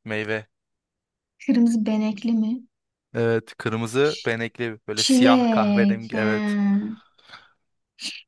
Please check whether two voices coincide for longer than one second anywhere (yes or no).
yes